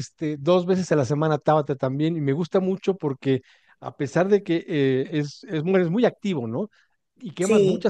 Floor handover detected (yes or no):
no